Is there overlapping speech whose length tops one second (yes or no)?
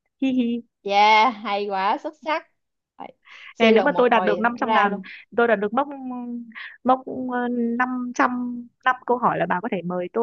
yes